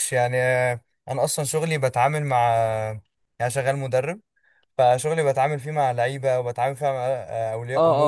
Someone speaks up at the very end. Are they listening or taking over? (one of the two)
listening